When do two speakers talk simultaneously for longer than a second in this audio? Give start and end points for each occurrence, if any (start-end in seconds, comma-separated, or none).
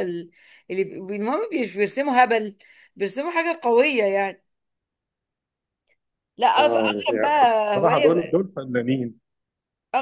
6.6-8.4